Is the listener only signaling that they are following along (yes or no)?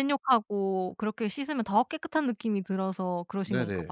no